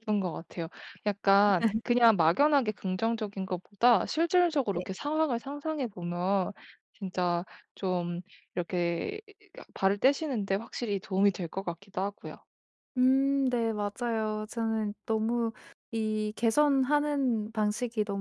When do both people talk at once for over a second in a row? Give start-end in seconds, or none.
none